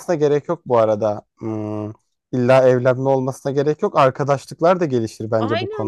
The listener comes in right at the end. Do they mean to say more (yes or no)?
yes